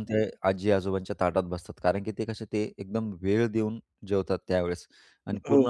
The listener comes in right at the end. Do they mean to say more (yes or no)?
no